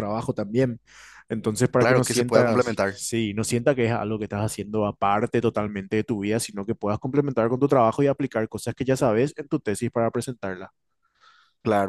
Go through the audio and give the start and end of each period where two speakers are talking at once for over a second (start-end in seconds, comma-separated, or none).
1.8-3.0